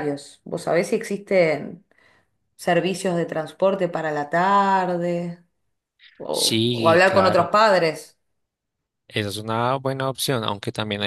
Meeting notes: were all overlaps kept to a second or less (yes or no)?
no